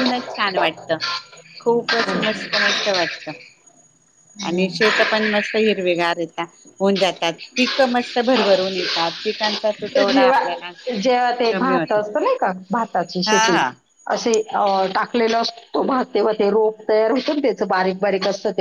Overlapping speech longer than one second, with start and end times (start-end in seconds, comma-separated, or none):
none